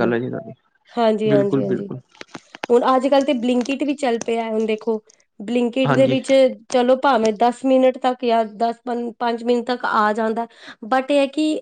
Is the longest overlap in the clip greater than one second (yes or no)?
no